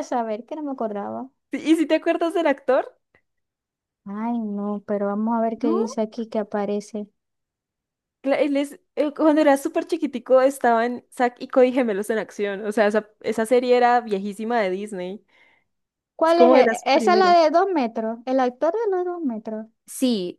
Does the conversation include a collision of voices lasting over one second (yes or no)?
yes